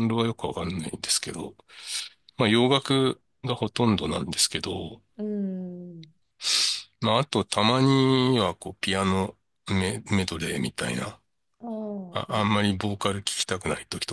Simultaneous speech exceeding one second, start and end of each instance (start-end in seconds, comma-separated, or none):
none